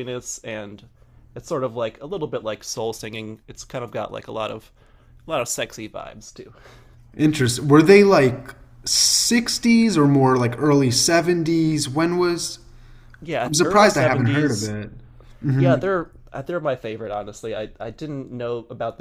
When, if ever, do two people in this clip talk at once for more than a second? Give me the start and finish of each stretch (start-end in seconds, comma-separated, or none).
13.4-14.8